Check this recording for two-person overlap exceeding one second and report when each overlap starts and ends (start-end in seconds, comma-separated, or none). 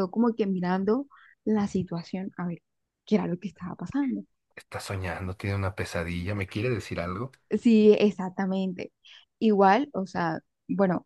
none